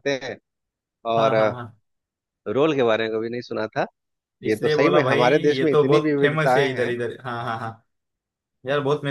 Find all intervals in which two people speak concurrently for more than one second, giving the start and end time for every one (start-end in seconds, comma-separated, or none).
4.5-6.9